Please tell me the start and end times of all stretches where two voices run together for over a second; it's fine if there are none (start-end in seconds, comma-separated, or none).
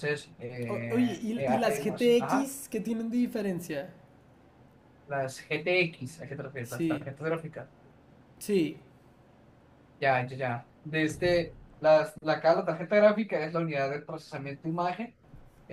0.7-2.5